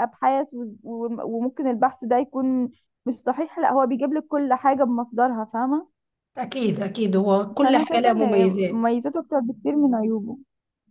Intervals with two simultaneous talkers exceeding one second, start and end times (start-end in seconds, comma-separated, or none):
7.6-8.9